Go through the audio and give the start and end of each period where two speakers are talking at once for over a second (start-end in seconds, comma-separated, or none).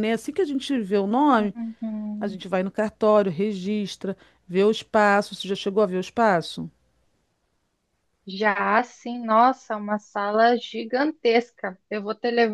none